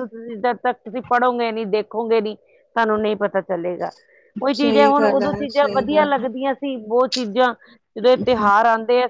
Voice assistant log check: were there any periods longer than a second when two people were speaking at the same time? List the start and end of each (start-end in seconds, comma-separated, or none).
4.5-6.2